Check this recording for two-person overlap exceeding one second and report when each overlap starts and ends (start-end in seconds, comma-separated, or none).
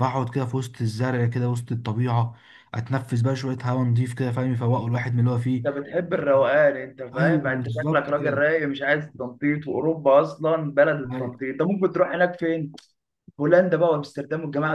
7.1-8.4